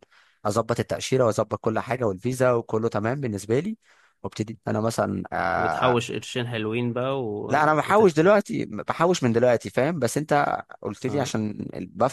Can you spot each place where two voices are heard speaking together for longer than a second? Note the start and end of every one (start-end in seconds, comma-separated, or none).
none